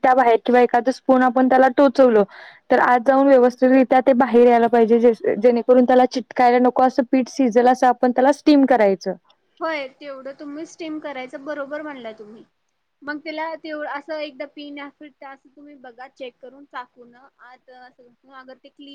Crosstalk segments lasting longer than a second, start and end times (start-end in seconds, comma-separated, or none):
none